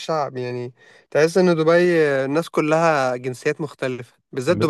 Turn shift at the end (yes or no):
no